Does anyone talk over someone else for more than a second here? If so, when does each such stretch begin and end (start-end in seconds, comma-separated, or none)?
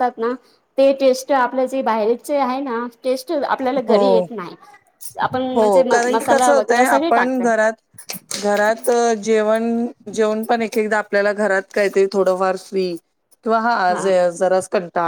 5.5-7.5